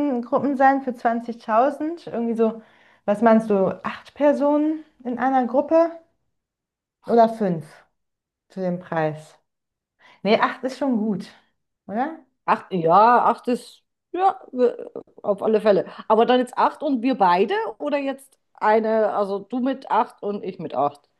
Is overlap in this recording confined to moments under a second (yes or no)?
yes